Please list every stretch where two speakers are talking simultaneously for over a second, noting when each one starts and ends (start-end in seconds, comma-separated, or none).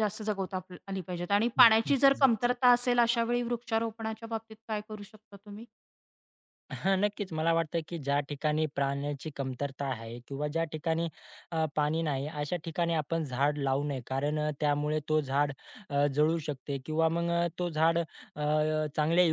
none